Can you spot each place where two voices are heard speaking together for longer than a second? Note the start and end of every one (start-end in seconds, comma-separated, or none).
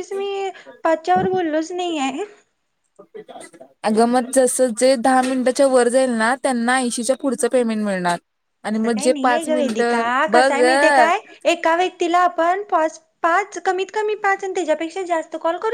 8.7-10.5